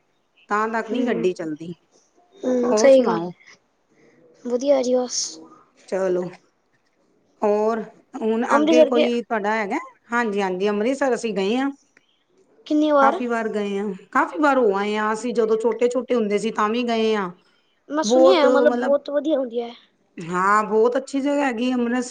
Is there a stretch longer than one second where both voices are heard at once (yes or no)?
no